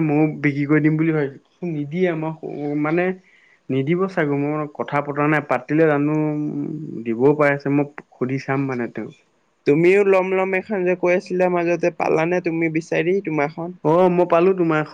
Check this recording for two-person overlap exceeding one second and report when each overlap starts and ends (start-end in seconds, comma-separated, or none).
none